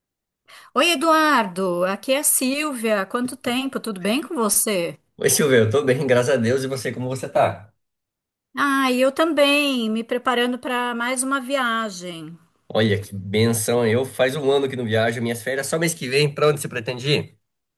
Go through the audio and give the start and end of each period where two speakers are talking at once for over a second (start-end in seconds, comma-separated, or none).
none